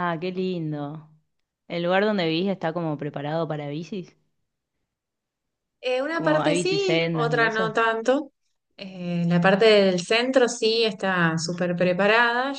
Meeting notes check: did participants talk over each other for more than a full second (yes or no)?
yes